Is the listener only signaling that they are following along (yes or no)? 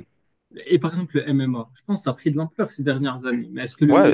no